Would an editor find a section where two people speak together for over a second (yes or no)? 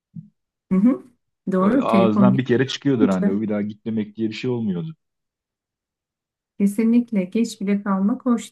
yes